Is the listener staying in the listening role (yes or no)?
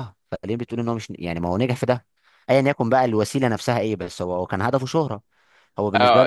no